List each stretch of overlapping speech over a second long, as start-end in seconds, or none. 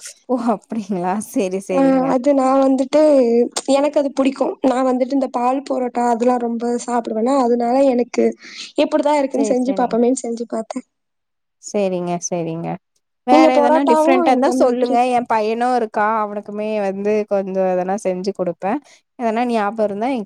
13.3-14.9